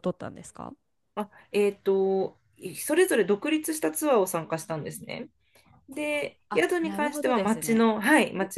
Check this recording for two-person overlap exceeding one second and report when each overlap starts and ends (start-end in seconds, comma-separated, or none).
6.5-7.8